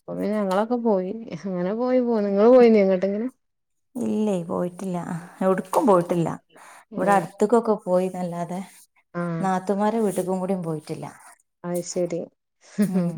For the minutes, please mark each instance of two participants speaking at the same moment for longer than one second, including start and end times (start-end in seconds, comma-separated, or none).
none